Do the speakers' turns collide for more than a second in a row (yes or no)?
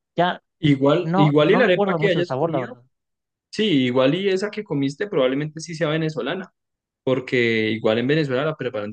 yes